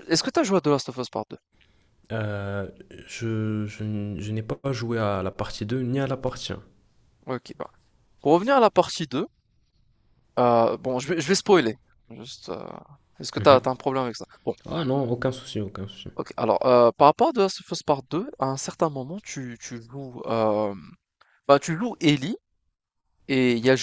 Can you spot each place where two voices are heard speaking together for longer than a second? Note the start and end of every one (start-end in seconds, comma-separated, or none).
none